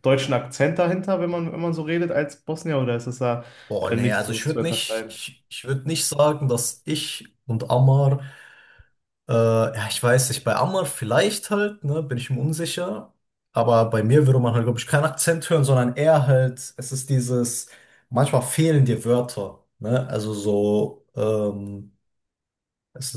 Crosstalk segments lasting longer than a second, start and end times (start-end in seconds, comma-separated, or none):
3.8-5.2